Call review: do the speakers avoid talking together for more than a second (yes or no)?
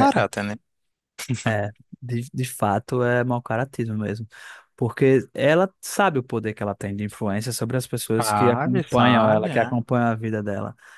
no